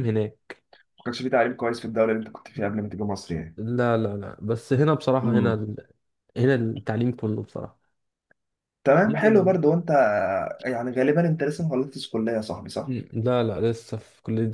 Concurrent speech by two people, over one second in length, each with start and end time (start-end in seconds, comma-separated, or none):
none